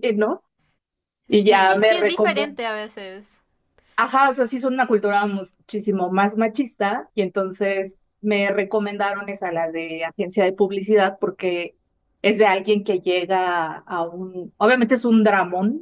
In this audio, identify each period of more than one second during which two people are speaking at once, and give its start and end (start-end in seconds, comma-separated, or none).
1.3-2.6